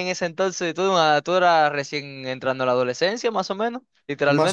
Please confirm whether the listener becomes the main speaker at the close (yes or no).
yes